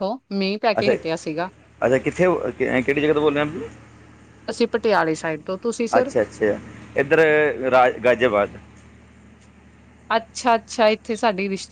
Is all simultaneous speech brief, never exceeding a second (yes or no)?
yes